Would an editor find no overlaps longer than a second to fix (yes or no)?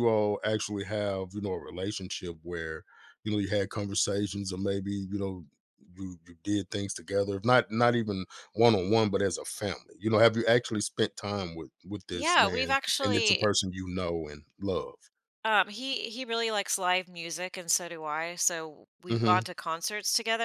no